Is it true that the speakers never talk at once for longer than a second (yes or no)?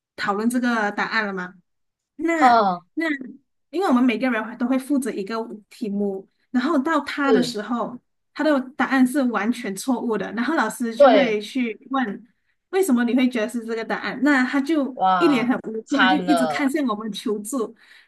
no